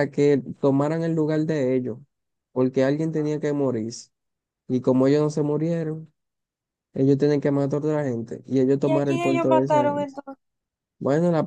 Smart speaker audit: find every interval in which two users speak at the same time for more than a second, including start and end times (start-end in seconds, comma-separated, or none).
8.8-10.1